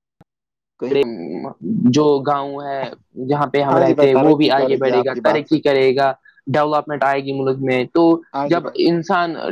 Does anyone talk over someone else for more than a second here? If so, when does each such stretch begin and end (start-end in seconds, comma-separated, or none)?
3.7-5.5